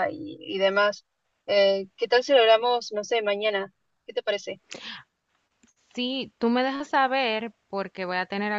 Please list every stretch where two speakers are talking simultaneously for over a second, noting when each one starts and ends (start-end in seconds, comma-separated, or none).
none